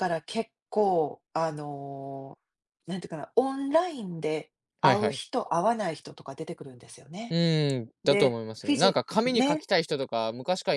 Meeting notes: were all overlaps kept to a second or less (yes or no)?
no